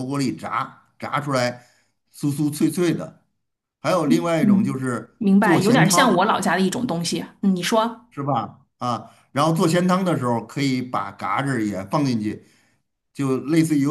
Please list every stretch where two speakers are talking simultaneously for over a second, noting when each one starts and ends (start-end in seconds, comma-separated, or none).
4.4-6.3